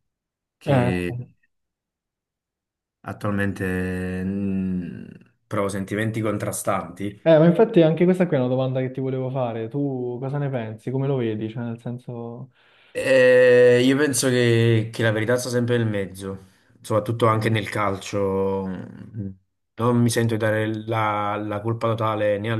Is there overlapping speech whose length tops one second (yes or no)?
no